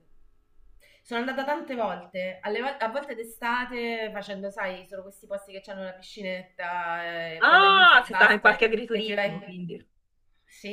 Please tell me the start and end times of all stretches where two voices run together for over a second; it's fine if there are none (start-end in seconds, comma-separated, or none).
7.4-9.5